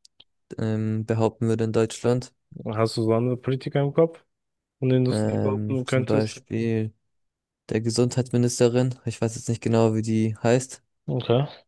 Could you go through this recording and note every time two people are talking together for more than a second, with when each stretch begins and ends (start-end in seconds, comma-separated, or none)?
5.1-6.4